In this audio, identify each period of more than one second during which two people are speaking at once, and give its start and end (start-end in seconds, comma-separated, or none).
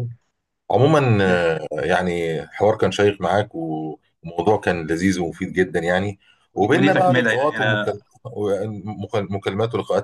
6.5-8.0